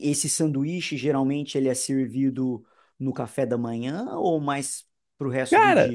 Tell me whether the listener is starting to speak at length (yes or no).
yes